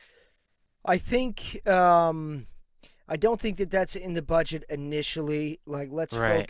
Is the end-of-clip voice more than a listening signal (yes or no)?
no